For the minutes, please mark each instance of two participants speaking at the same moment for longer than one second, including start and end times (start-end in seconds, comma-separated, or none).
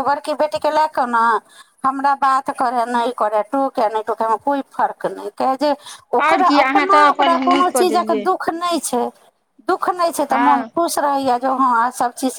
6.3-8.2